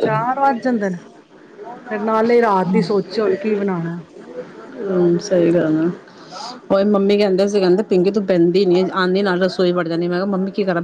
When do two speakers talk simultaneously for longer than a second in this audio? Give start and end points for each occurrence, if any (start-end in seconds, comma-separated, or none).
none